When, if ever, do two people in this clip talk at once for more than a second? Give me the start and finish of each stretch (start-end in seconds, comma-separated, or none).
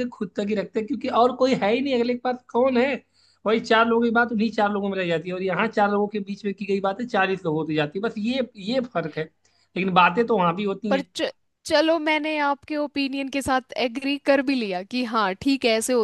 none